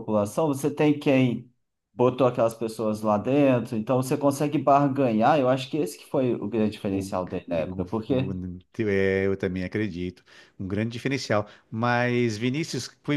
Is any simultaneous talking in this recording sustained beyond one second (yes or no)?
yes